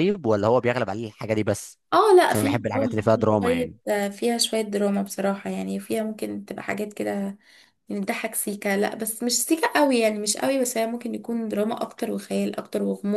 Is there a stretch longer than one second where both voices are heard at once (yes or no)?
yes